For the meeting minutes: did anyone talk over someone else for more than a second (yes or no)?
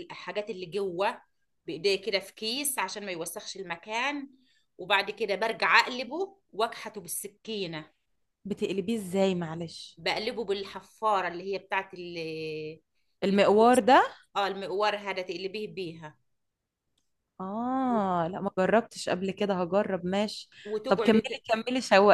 no